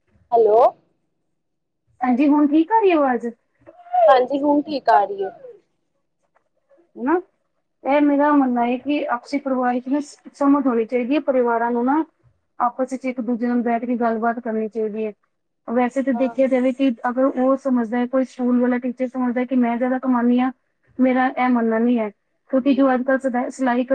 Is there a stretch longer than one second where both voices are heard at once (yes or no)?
no